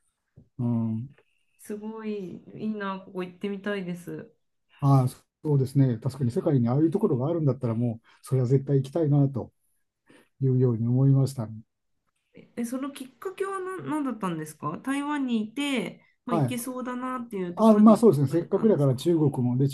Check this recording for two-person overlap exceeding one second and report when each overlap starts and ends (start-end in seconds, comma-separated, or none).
17.6-19.1